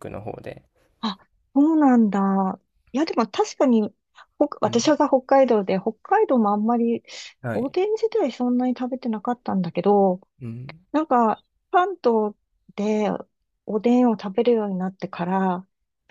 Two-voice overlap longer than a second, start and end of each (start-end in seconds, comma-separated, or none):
none